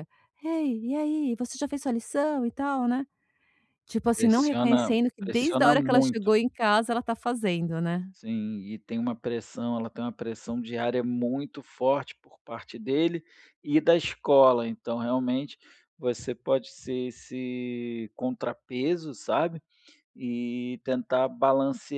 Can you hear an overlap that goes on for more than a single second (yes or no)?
yes